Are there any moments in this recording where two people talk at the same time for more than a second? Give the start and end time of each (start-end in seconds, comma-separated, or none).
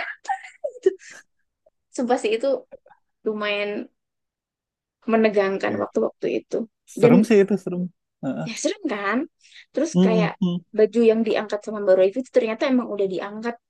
none